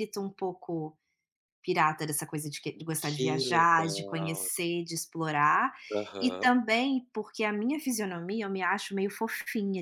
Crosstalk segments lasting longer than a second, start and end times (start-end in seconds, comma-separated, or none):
3.0-4.4